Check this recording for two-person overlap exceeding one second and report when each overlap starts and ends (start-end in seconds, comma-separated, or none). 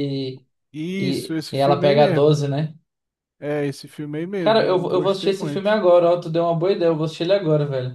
1.0-2.4, 4.4-5.8